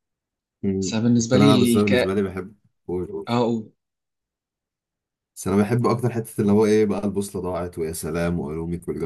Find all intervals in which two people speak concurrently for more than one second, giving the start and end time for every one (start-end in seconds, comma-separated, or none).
0.8-2.1